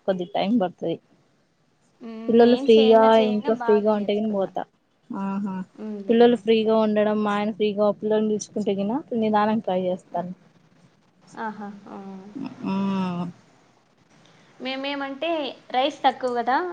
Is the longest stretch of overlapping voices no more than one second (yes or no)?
no